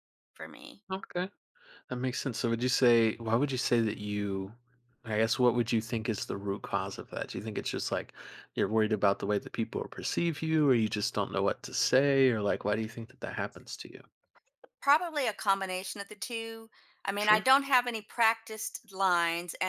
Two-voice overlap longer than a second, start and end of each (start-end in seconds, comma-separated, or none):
none